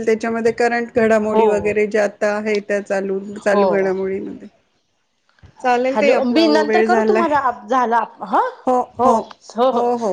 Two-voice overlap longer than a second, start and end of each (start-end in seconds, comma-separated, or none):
none